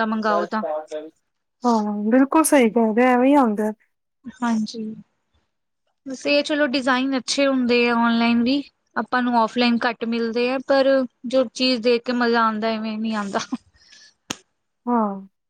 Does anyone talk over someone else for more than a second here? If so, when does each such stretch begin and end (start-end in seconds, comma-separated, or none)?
none